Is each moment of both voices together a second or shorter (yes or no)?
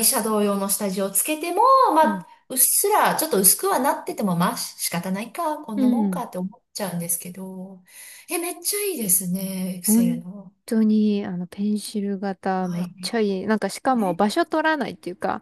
yes